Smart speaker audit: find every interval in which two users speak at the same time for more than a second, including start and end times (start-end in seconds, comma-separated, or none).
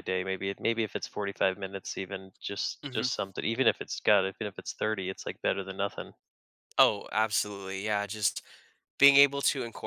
none